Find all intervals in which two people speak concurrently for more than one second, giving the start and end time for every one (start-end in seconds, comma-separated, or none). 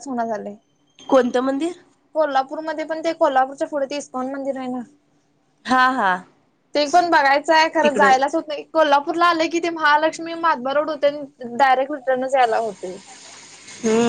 none